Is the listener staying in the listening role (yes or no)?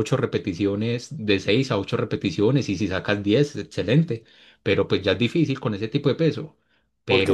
no